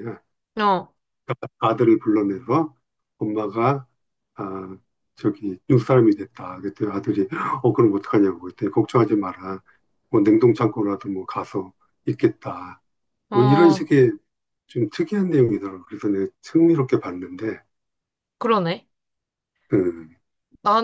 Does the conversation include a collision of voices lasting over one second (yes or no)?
no